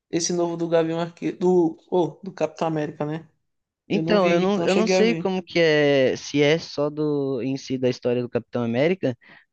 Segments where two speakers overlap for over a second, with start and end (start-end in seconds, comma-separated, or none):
3.9-5.3